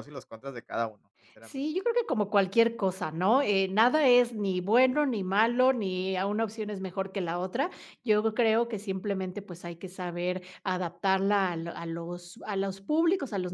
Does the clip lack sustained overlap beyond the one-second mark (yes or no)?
yes